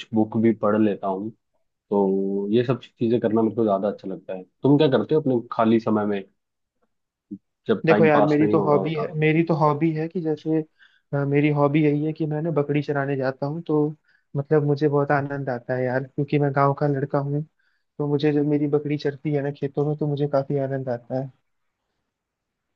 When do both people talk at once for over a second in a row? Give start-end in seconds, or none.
7.8-9.1